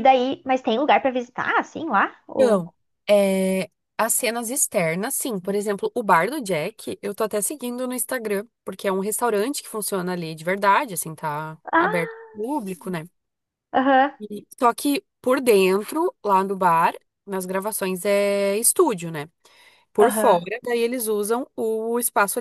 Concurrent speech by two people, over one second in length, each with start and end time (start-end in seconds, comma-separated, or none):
none